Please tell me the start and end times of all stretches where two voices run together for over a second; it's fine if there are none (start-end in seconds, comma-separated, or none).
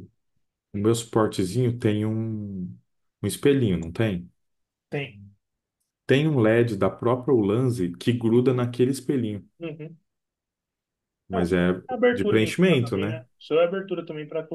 11.3-13.2